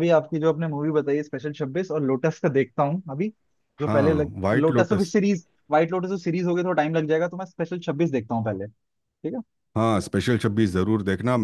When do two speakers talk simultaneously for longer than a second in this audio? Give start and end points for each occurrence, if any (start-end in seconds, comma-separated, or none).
3.9-5.1